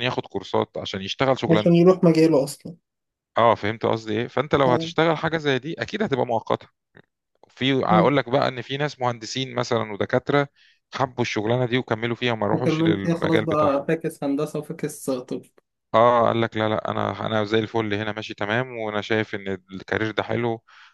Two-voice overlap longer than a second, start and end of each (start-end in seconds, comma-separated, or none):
12.5-13.8